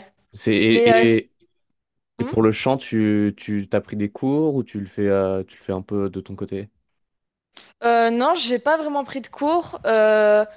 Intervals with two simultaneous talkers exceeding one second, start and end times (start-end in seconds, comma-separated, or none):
none